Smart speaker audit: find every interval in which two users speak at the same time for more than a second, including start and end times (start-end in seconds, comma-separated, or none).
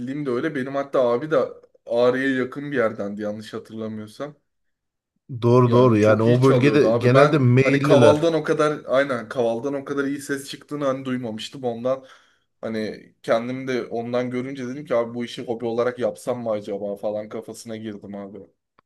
5.7-8.3